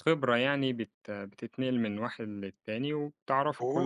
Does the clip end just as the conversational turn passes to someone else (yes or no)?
yes